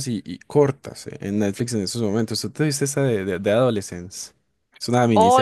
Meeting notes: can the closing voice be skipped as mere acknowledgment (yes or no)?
no